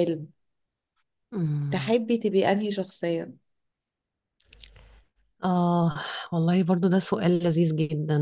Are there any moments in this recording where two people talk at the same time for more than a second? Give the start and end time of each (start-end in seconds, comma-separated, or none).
none